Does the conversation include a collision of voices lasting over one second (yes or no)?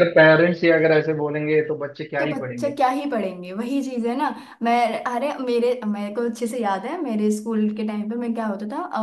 no